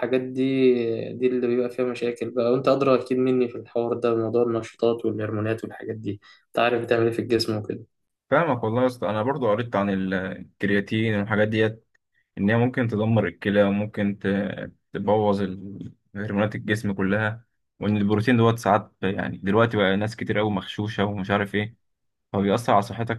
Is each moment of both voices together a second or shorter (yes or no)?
yes